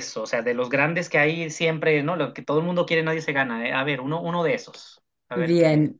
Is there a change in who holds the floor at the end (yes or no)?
yes